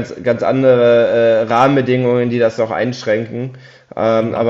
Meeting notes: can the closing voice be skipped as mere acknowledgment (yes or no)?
yes